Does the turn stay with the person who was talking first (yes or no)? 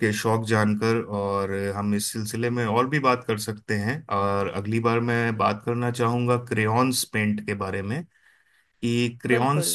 yes